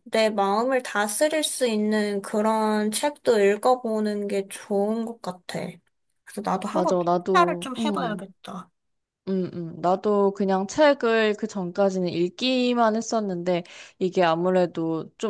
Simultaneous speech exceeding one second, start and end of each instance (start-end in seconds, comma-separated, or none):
6.7-8.2